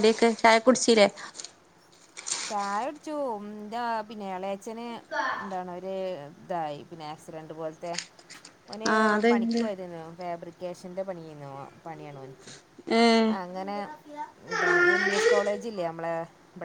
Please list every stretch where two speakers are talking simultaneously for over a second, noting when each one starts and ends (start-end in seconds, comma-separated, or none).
none